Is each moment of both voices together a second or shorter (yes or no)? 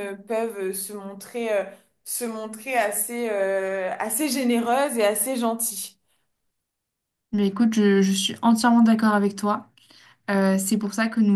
yes